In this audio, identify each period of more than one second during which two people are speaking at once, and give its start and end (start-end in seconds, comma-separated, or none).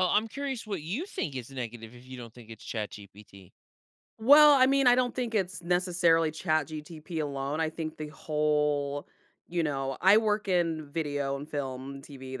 none